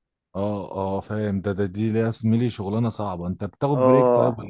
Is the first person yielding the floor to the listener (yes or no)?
yes